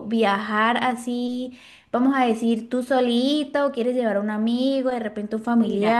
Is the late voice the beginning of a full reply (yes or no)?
yes